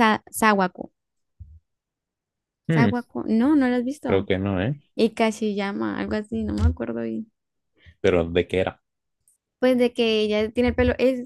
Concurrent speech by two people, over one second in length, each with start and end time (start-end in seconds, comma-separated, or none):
none